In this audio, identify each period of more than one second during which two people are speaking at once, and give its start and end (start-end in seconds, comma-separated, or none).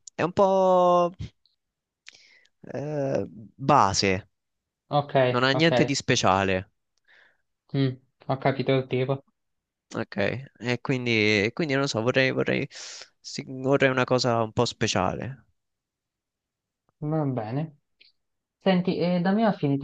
none